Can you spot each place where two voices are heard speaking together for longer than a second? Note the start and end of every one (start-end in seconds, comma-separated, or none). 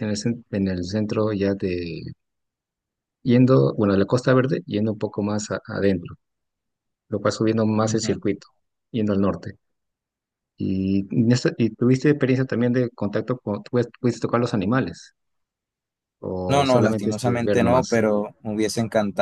16.5-18.0